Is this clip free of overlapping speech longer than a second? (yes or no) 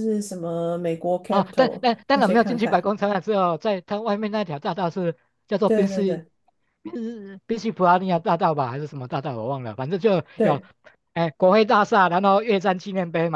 no